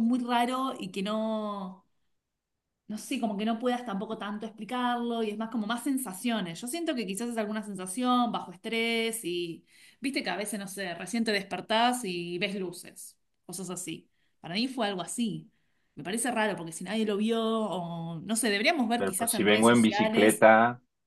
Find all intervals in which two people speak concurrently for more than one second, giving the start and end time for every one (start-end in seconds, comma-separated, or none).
19.0-20.4